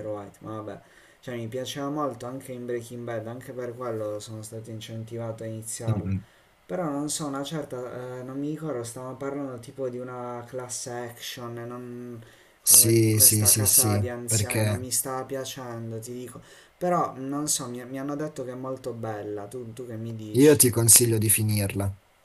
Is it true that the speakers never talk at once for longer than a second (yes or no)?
no